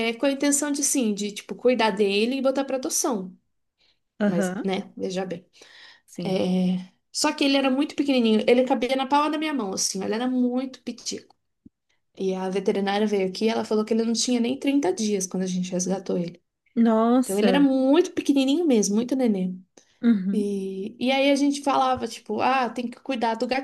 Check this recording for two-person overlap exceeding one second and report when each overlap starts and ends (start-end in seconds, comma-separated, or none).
none